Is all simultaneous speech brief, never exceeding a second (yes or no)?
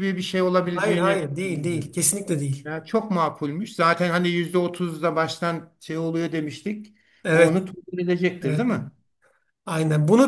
no